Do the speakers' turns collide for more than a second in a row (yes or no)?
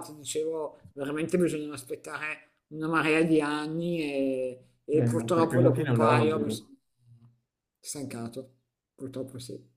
yes